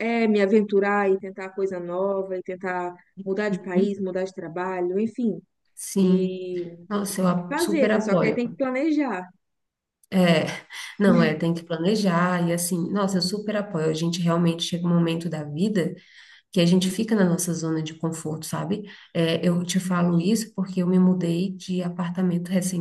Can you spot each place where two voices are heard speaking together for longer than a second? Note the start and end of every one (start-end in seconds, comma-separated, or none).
7.2-8.4